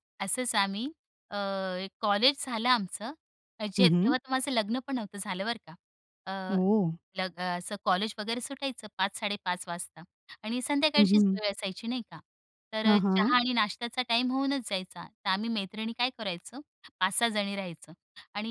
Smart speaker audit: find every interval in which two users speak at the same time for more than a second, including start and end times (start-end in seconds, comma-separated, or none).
none